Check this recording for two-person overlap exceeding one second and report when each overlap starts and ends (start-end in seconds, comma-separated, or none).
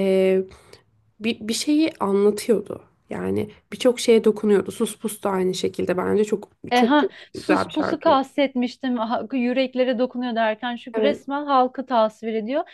6.7-8.2